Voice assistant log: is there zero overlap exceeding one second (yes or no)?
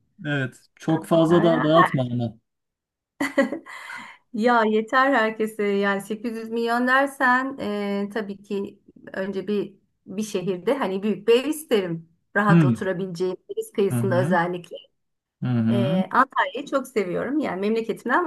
yes